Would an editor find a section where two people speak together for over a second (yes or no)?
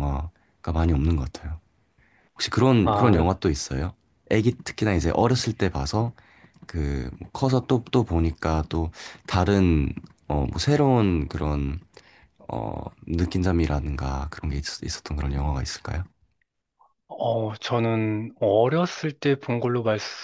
no